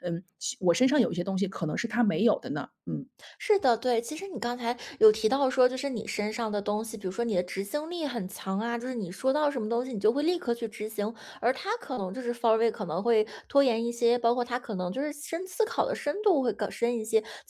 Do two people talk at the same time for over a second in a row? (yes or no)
no